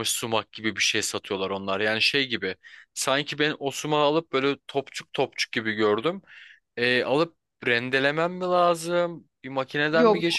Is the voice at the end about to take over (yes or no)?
no